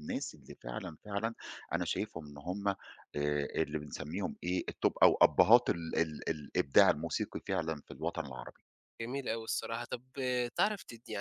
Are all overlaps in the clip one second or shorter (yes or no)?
yes